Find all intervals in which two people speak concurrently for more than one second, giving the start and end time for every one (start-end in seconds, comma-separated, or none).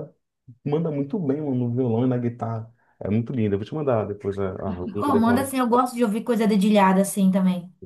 none